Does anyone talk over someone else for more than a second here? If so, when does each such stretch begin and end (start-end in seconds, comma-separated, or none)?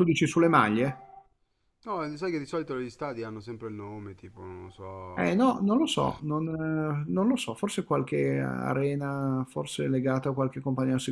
none